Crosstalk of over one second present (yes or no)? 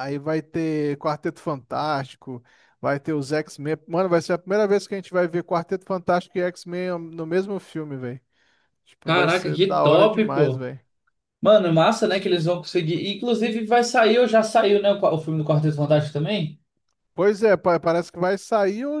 yes